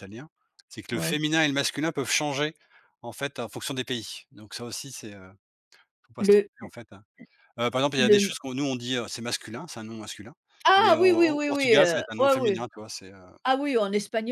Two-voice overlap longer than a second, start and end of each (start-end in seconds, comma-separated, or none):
10.8-12.6